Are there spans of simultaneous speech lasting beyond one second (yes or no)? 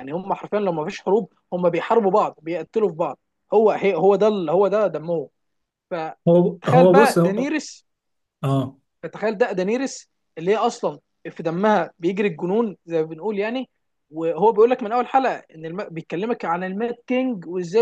yes